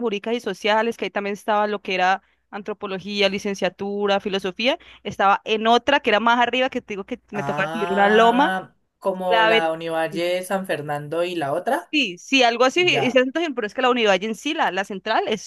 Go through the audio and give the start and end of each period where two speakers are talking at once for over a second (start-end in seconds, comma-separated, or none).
7.3-8.5